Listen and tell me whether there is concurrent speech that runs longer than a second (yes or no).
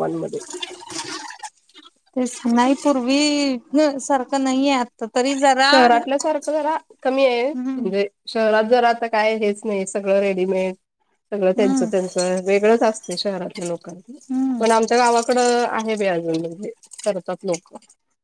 no